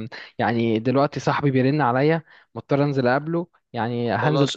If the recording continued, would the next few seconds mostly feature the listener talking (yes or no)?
yes